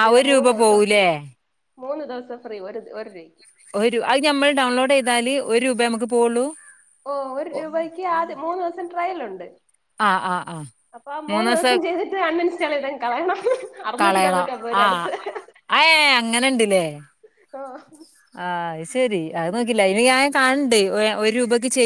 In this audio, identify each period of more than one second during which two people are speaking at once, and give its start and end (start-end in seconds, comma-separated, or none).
none